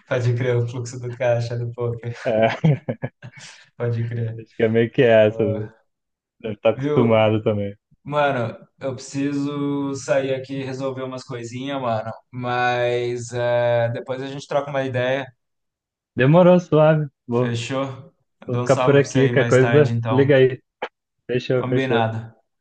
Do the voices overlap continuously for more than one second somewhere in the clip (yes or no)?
yes